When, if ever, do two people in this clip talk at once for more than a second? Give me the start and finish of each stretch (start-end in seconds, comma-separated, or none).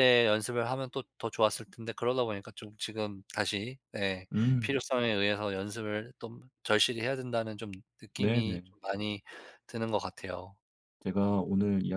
none